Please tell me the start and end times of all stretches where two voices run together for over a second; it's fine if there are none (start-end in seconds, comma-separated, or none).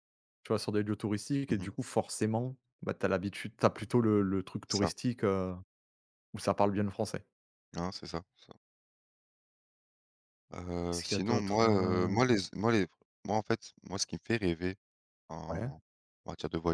10.9-12.2